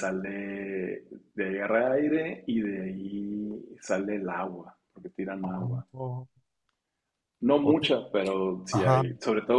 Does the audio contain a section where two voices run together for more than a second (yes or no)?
no